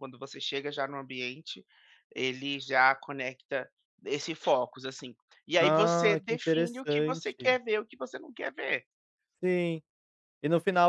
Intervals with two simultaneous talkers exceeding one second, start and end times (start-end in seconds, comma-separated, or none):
5.6-7.6